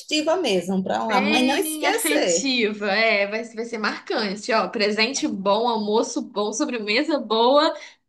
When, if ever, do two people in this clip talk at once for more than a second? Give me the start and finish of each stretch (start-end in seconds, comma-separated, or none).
1.1-2.5